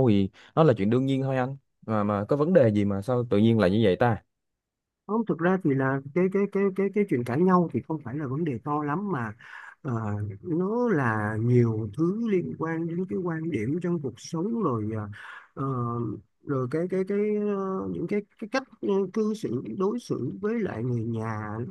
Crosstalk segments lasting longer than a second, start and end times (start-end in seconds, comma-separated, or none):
none